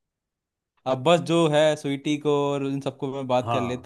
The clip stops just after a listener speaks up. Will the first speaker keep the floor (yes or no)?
no